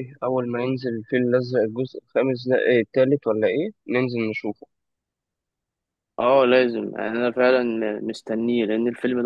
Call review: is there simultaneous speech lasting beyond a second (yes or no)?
no